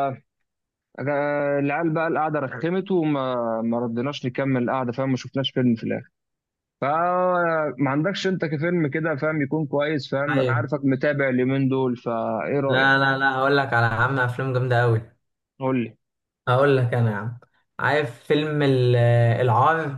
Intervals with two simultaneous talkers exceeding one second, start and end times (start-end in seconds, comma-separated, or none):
none